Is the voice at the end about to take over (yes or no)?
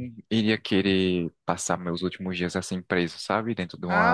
yes